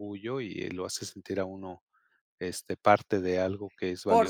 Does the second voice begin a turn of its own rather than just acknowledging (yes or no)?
yes